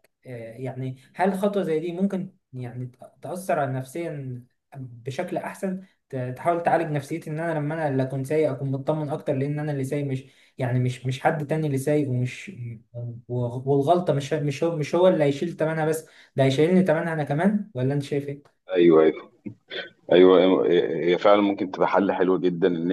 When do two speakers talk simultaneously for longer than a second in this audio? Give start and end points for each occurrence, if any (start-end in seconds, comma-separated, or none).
none